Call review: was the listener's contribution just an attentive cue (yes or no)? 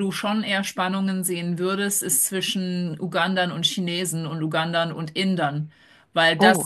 yes